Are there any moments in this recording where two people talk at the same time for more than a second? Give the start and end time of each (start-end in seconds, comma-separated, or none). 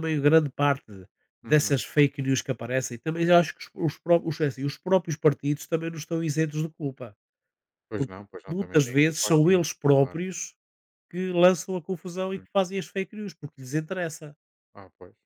8.0-10.2